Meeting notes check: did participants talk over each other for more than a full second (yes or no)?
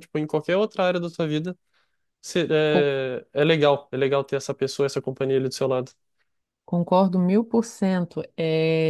no